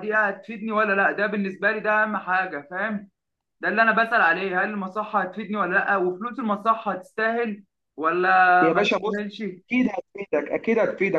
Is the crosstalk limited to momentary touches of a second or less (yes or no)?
yes